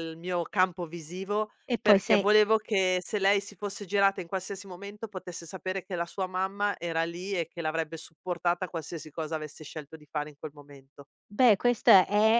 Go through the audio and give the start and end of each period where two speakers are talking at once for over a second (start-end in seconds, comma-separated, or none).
none